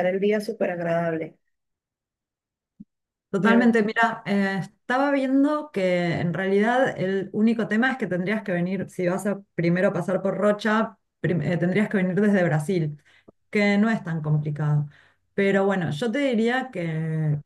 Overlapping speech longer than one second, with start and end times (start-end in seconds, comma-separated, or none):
none